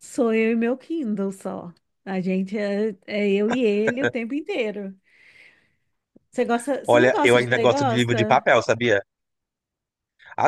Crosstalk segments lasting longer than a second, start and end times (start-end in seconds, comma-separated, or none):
6.8-8.4